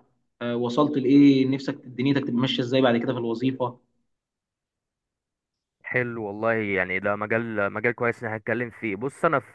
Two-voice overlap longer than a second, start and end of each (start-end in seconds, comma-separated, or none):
none